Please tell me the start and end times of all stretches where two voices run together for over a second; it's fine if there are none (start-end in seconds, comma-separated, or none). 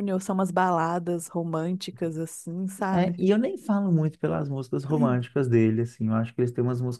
none